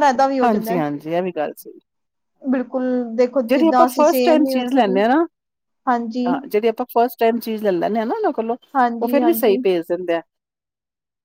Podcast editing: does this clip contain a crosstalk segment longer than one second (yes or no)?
yes